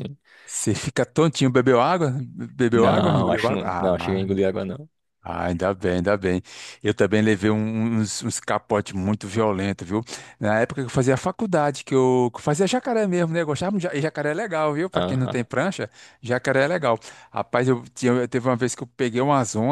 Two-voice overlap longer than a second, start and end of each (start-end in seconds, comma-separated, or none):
2.7-4.3